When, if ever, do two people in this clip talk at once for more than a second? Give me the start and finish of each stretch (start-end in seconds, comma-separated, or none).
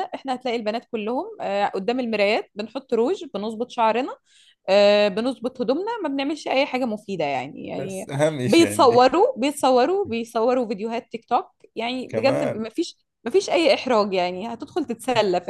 7.8-9.1